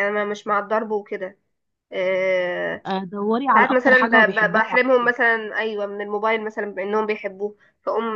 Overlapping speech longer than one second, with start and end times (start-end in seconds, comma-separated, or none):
3.5-4.8